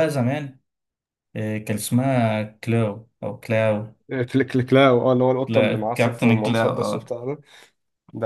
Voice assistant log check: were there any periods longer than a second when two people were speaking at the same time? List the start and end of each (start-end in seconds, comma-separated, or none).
5.5-7.1